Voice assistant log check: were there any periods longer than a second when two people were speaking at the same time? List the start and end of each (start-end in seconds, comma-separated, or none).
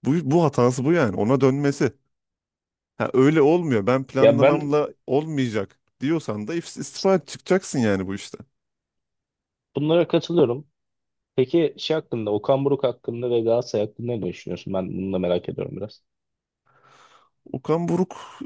none